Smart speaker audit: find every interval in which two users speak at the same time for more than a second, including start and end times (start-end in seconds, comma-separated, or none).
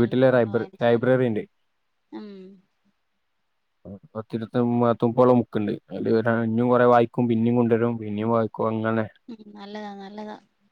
none